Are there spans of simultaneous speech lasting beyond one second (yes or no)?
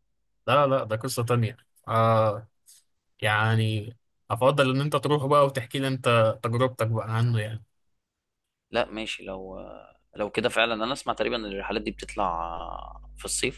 no